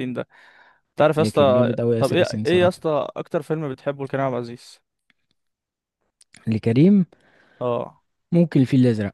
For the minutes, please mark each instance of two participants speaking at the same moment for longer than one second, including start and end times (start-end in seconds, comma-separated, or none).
1.2-2.9